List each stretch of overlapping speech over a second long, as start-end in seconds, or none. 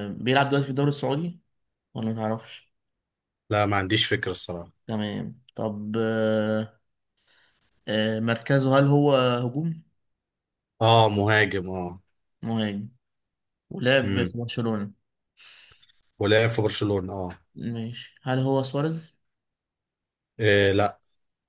none